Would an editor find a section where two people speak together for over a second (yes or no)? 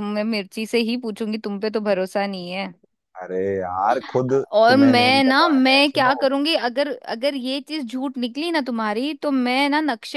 yes